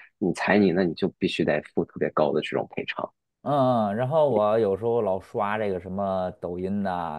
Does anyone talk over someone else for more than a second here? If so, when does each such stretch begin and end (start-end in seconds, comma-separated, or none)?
none